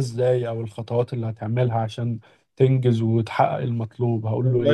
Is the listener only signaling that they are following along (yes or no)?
no